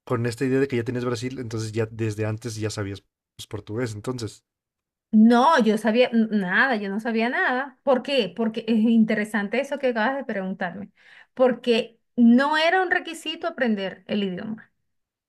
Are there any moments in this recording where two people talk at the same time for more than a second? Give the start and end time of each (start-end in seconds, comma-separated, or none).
none